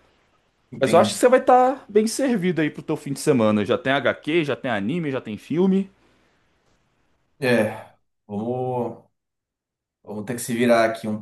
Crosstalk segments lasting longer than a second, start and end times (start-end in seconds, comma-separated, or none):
none